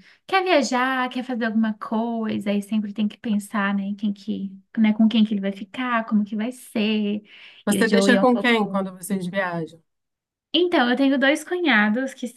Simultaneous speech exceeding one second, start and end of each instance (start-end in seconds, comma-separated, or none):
7.7-8.9